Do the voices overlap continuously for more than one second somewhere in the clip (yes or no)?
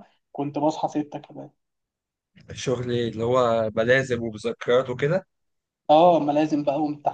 no